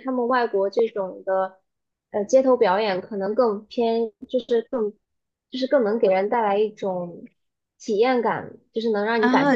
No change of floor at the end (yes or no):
no